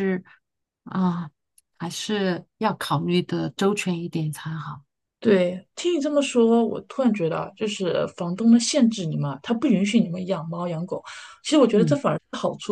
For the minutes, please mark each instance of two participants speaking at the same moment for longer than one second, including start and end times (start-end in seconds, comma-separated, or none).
none